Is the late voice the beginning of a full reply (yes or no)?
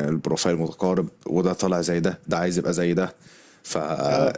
no